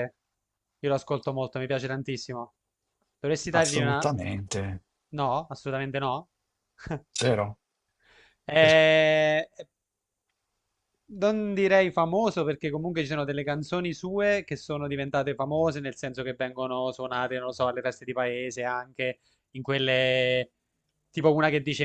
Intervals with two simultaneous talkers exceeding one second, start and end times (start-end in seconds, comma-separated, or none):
none